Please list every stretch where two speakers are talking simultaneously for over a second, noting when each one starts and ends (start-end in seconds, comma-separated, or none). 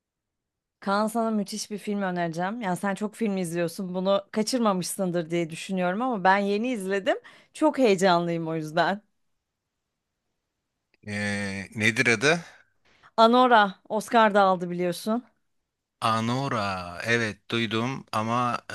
none